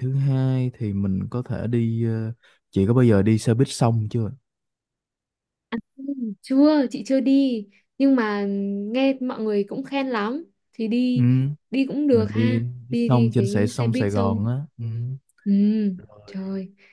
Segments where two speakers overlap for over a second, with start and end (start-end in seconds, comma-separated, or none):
12.1-14.4